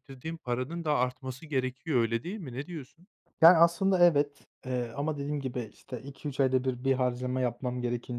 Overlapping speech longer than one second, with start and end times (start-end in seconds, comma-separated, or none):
none